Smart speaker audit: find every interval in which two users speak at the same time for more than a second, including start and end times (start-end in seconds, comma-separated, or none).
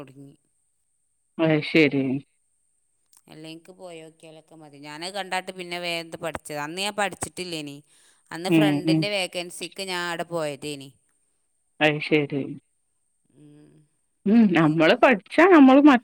none